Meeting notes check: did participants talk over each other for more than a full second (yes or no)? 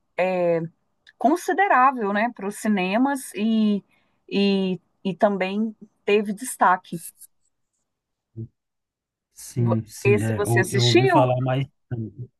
yes